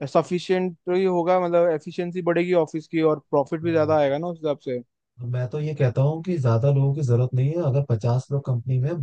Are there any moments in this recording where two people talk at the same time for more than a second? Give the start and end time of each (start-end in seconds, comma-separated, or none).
none